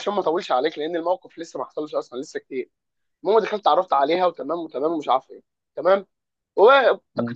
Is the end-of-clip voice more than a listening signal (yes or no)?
no